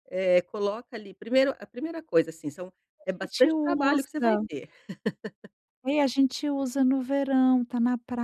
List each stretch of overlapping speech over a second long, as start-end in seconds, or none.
3.0-4.4